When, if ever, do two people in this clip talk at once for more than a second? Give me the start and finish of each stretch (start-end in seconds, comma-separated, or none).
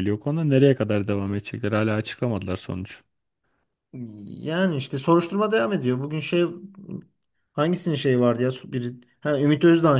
none